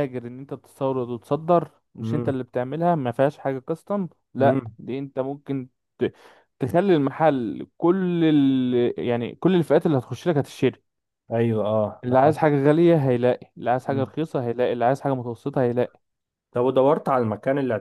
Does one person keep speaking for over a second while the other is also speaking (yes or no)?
no